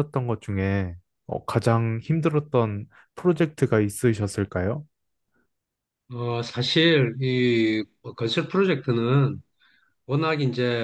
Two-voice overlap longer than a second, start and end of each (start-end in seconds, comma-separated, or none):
none